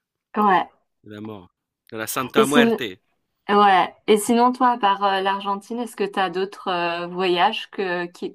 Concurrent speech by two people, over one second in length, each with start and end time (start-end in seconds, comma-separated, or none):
none